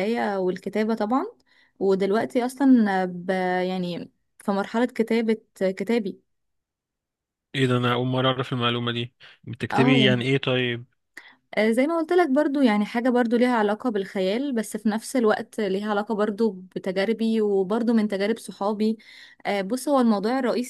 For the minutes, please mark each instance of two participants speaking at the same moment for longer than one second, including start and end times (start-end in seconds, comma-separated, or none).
none